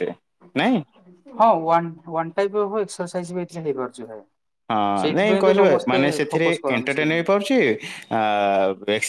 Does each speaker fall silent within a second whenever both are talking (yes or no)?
no